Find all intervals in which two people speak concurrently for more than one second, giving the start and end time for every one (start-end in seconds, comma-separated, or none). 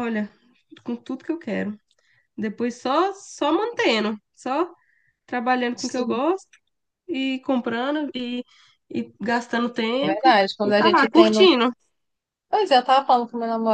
10.0-11.5